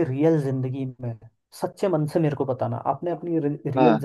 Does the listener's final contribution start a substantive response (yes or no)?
no